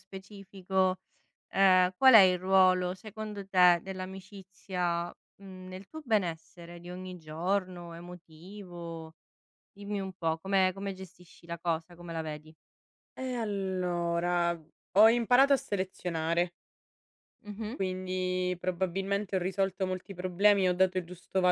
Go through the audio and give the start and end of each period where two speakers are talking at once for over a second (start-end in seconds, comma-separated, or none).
none